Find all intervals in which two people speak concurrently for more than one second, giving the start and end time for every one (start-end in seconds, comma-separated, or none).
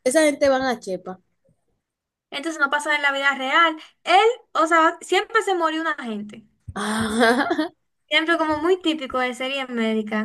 none